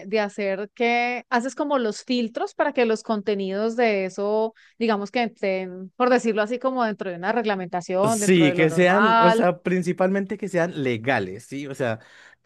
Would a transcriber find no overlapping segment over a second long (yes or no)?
no